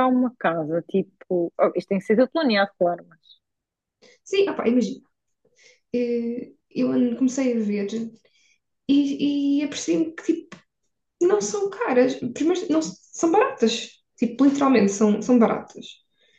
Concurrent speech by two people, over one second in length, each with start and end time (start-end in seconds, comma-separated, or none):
none